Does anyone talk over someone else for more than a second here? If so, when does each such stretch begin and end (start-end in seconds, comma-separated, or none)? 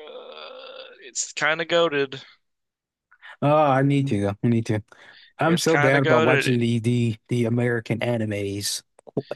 5.4-6.6